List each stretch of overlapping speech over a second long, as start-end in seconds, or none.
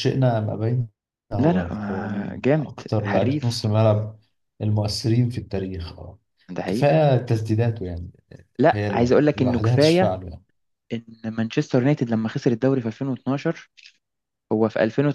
1.4-3.7, 8.7-10.2